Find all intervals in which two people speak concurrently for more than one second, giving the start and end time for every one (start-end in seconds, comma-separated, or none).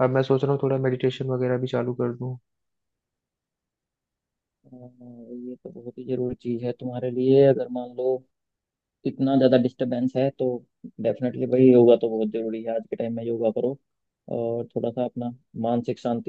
none